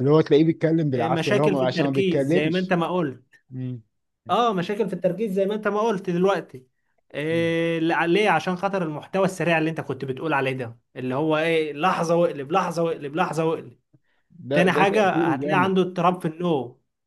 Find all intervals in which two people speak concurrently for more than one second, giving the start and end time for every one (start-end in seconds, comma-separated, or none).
0.9-2.7, 14.5-15.7